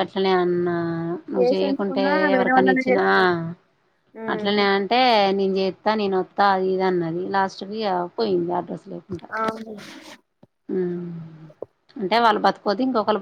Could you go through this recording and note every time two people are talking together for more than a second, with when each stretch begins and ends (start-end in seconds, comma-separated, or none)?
1.4-3.0